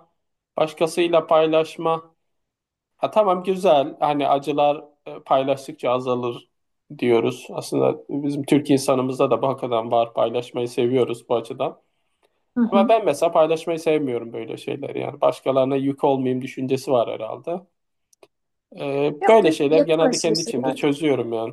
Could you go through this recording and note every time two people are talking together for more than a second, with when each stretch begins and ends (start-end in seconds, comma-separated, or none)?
19.2-20.8